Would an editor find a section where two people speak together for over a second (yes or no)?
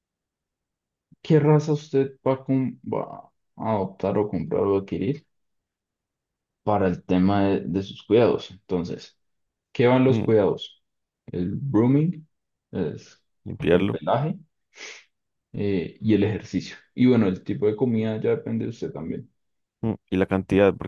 no